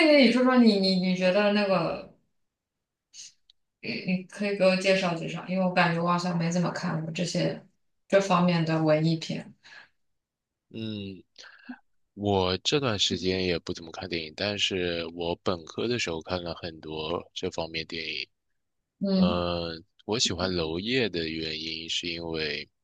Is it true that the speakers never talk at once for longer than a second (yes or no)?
yes